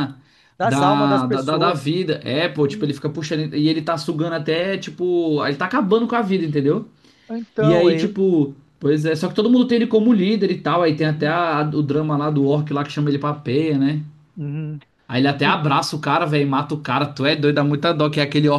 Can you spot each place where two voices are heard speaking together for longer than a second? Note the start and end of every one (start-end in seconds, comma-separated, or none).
0.6-1.9